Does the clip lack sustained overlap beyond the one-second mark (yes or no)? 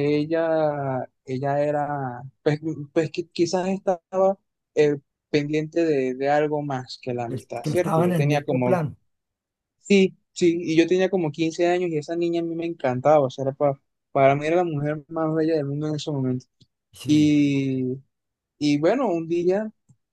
no